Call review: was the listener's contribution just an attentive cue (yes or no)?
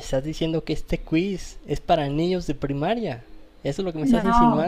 no